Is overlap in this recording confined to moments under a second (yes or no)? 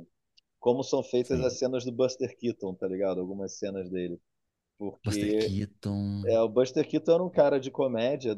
yes